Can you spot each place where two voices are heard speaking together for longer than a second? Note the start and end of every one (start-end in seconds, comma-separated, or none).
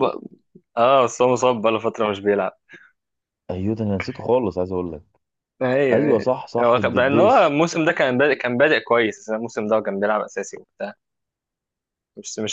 5.9-7.5